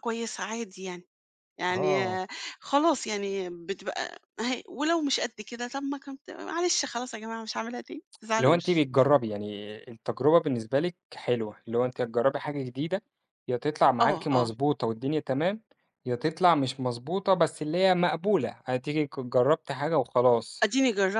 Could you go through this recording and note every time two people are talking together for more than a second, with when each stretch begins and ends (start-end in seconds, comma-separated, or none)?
none